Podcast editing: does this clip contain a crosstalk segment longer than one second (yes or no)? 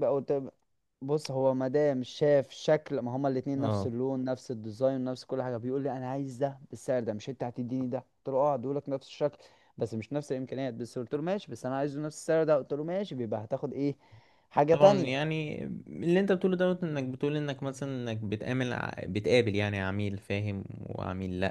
no